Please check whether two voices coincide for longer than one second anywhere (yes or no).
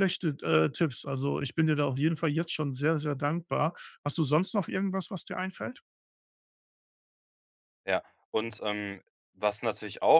no